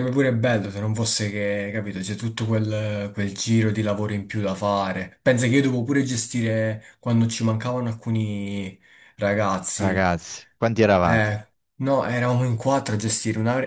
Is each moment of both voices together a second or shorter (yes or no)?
yes